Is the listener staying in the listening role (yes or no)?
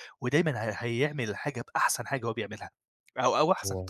yes